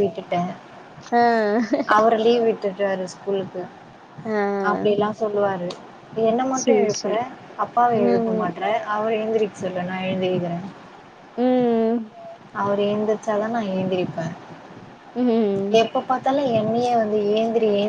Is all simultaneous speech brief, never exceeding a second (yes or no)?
yes